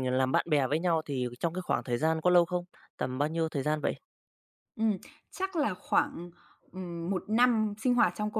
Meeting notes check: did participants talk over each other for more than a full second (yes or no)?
no